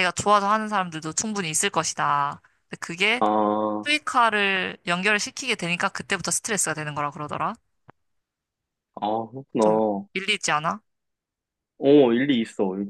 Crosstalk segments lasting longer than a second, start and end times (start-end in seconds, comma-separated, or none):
none